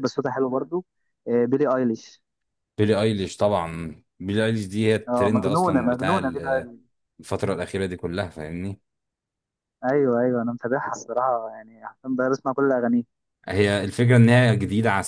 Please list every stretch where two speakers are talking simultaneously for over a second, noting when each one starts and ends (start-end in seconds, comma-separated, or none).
5.1-6.7